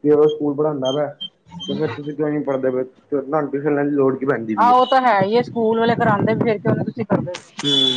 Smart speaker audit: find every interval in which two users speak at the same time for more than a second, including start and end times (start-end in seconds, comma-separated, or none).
none